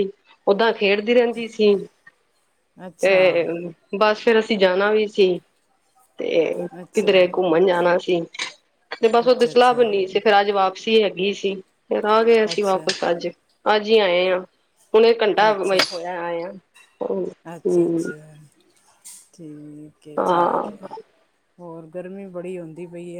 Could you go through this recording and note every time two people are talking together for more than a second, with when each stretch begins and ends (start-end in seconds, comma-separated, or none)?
none